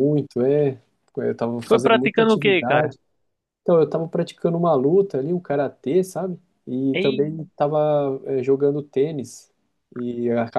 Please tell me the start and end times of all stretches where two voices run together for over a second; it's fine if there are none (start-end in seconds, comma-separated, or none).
1.6-2.9